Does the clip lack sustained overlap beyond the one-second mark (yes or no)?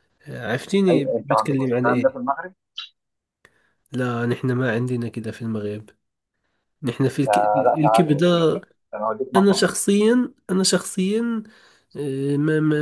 no